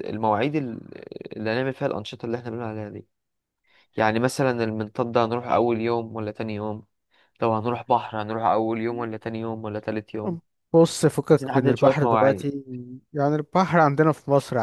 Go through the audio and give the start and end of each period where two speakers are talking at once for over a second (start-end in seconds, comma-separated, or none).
11.3-12.5